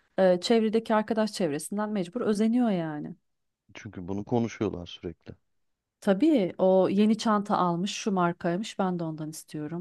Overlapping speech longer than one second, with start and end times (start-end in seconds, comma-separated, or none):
none